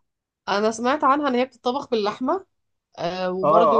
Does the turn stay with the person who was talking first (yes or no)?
no